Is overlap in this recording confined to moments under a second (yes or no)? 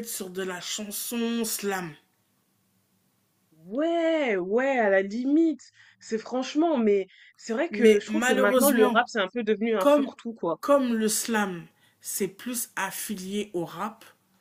no